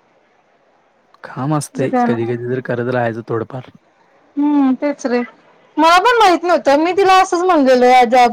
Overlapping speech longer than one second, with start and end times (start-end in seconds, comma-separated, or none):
none